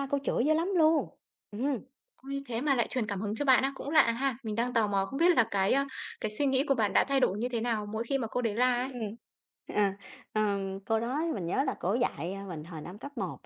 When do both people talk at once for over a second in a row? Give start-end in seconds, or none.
none